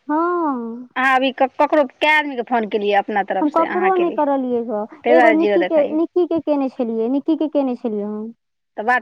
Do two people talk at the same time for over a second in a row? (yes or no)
yes